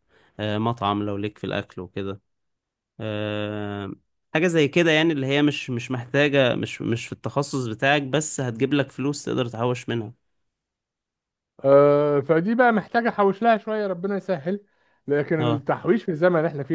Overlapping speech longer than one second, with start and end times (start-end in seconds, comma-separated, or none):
none